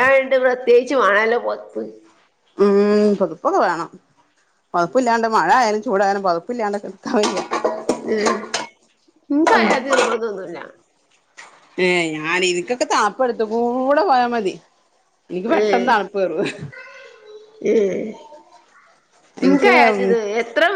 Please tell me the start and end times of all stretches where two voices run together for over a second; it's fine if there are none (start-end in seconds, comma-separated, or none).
none